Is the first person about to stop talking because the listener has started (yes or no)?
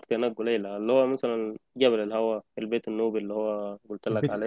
yes